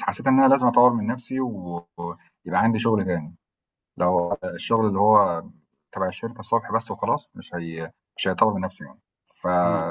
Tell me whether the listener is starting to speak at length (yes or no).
no